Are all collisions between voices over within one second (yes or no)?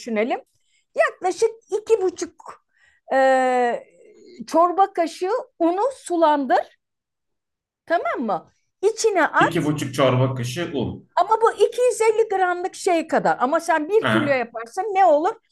yes